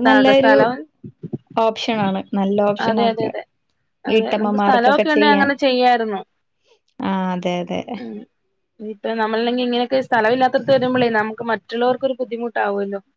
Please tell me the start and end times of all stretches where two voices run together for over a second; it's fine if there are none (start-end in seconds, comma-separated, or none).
4.1-5.5